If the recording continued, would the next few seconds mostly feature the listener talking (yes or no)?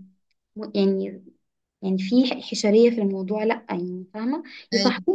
no